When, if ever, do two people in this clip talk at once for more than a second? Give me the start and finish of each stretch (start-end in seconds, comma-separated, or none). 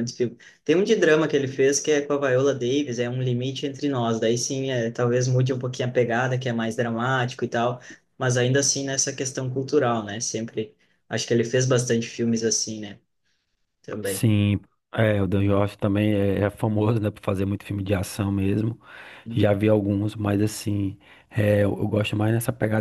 none